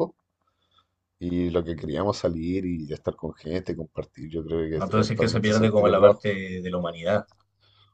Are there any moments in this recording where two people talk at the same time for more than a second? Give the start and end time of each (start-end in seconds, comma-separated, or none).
4.8-6.3